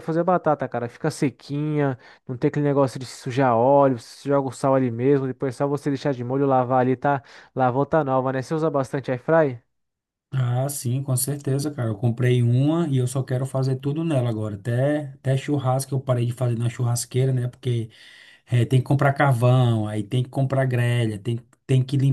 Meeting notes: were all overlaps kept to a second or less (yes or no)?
yes